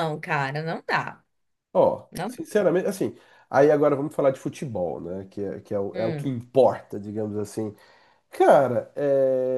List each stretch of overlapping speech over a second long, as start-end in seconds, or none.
none